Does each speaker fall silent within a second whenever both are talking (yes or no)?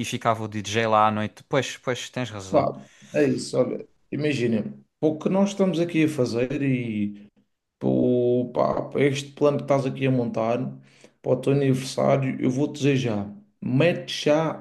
yes